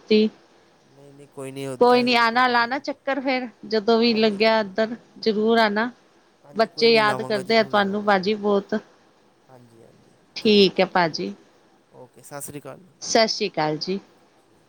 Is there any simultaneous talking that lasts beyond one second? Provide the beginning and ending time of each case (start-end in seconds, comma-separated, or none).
none